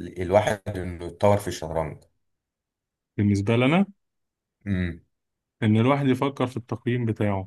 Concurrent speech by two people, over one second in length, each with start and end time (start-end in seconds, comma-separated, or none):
none